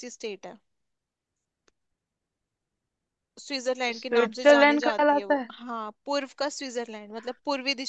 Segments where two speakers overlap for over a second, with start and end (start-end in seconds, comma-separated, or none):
3.9-5.5